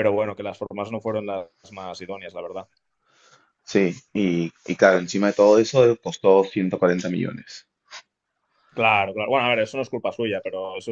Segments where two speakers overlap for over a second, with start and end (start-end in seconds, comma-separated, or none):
none